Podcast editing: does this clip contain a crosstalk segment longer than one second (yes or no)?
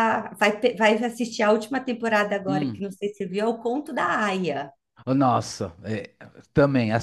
no